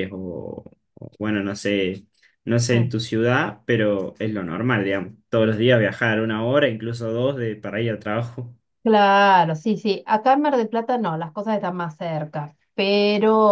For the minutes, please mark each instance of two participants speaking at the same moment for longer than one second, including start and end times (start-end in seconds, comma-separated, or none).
none